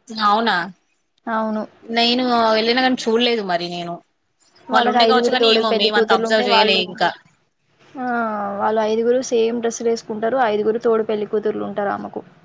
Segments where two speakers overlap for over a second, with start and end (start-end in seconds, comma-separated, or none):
4.7-6.8